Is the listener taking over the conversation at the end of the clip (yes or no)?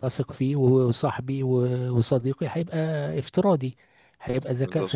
no